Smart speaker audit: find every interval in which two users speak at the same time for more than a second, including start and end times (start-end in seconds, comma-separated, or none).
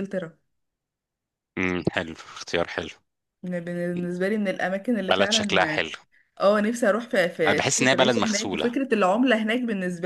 7.5-8.7